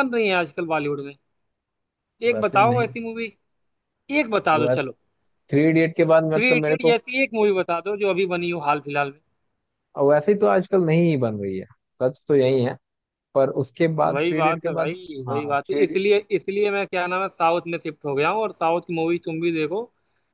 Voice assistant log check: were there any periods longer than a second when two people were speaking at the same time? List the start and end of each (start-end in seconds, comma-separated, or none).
14.1-16.0